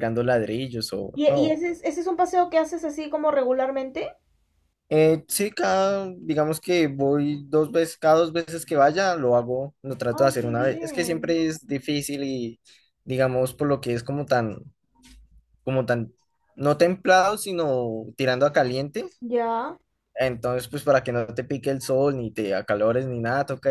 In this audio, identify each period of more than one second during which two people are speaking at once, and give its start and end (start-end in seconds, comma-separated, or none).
10.1-11.4